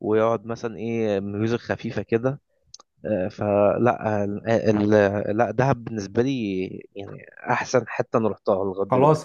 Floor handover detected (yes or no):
yes